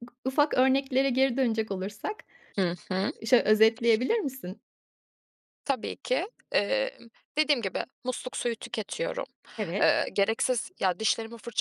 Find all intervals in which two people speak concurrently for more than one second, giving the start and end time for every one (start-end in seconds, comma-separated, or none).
none